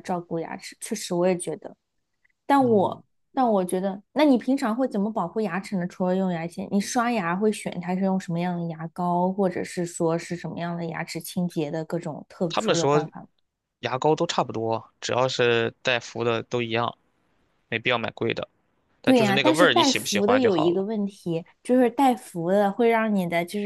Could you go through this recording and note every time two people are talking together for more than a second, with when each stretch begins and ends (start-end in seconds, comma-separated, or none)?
19.1-20.8